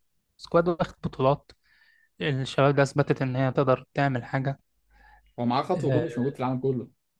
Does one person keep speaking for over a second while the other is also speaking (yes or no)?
no